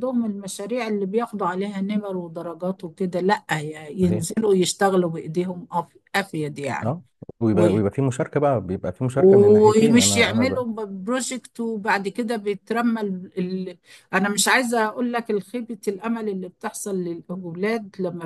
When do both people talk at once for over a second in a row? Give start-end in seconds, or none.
9.1-10.6